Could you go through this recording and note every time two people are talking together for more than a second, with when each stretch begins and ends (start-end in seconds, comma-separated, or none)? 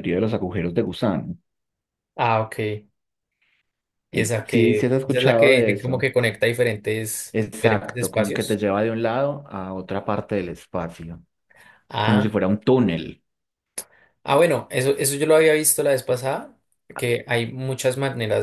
4.1-6.1, 7.3-8.6